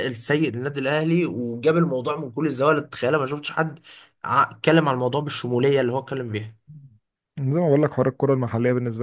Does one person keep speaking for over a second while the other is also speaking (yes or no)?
no